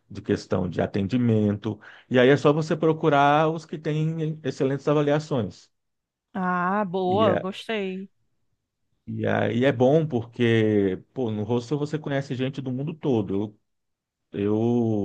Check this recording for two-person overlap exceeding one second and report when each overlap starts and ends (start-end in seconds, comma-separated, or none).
none